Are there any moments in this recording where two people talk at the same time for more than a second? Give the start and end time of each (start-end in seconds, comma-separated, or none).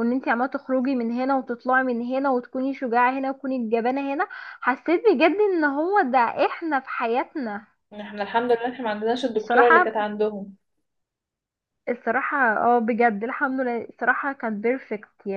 none